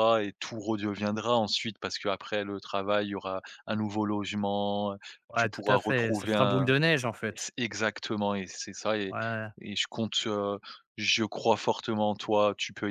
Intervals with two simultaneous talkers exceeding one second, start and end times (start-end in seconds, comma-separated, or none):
5.3-6.7